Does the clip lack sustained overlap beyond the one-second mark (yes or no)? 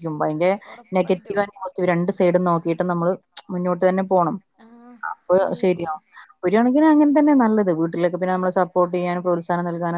yes